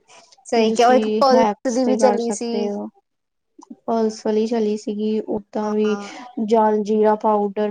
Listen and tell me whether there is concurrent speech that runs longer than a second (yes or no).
yes